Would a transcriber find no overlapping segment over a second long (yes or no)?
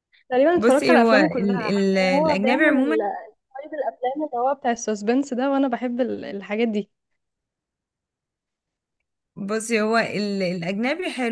no